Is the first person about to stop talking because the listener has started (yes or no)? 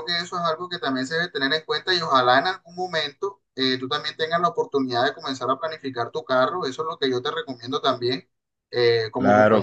no